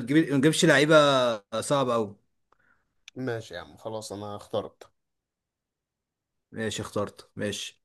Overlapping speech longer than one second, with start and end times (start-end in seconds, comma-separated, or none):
none